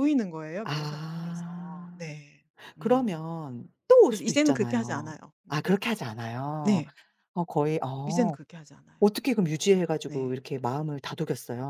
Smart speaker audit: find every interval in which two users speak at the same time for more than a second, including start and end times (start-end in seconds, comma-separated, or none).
0.6-2.1, 4.0-5.7